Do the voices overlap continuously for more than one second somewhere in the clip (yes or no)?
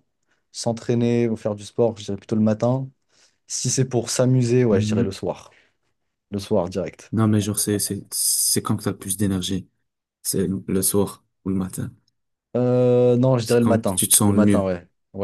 yes